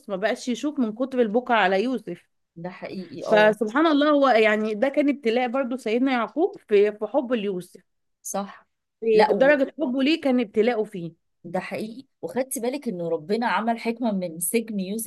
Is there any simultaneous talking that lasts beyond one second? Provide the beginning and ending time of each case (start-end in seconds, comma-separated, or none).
none